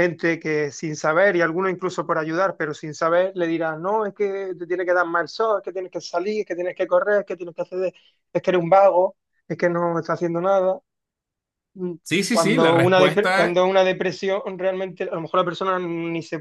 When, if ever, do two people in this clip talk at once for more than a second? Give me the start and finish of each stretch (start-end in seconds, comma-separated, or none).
12.0-13.6